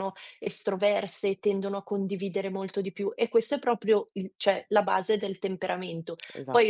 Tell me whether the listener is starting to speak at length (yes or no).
no